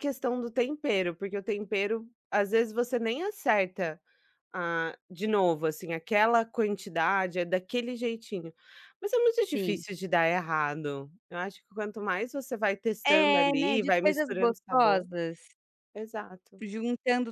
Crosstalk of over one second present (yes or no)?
yes